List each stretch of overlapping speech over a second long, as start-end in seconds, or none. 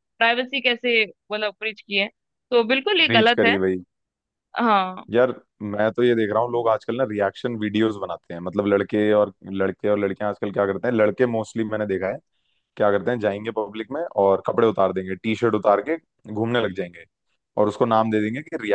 none